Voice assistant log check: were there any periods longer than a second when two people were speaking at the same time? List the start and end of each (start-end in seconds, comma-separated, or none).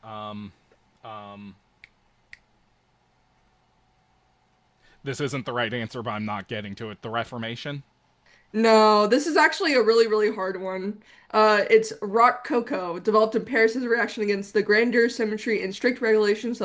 none